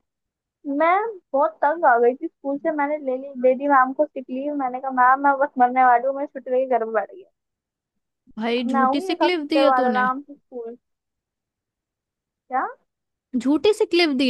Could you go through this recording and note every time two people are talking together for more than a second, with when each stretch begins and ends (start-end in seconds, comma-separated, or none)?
8.6-10.1